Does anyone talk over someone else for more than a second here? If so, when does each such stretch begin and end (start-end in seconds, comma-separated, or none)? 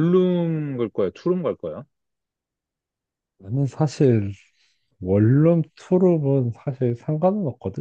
none